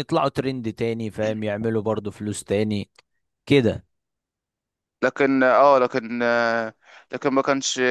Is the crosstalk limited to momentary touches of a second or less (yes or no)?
yes